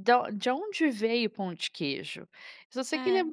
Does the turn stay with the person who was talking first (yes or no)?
yes